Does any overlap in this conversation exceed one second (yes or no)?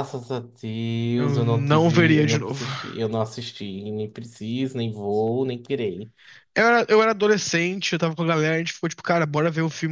yes